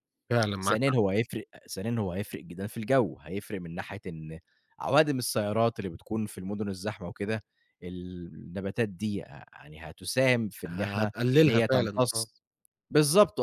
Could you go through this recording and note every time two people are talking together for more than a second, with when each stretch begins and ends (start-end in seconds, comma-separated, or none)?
10.7-12.3